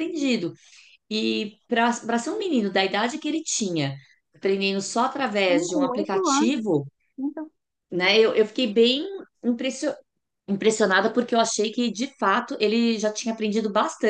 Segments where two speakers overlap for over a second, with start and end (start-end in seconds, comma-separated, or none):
5.5-6.7